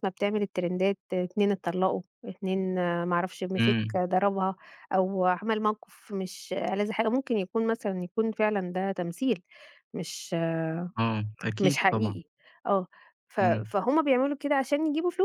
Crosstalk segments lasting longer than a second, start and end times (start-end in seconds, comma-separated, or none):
none